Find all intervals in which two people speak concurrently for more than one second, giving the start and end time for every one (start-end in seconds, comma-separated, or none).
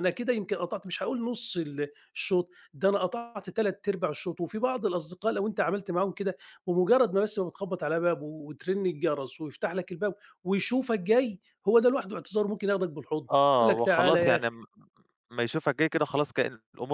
13.3-14.6